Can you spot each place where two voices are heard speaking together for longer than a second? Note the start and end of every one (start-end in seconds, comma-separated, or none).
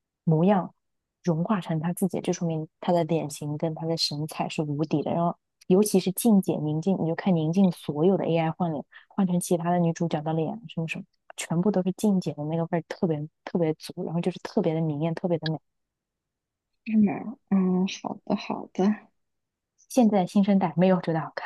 none